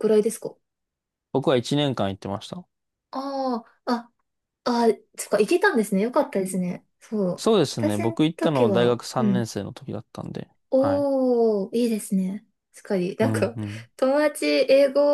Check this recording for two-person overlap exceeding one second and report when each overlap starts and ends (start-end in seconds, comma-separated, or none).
7.4-9.5